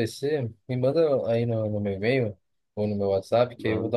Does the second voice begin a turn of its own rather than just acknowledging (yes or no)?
no